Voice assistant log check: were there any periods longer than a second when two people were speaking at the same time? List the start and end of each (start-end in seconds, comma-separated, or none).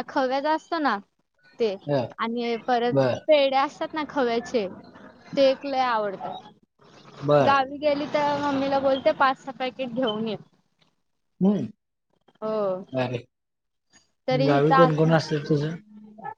14.5-15.8